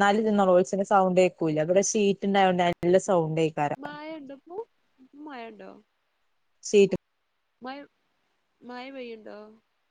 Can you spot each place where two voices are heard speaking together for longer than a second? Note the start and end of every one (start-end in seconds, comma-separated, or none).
none